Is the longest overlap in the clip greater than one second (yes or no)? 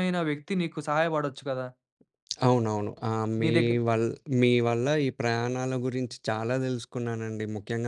no